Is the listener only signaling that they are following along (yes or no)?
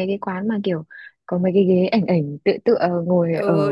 no